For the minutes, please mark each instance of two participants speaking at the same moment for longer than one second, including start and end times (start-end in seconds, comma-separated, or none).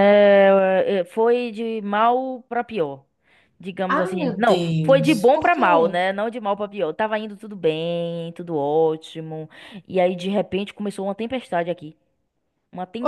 3.9-6.0